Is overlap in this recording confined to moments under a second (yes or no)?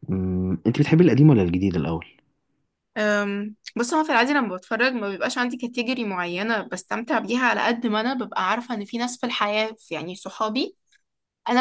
yes